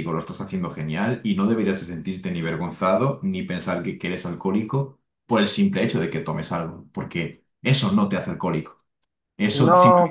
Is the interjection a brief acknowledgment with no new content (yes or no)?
yes